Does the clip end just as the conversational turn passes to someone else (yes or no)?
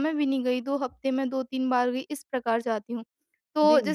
no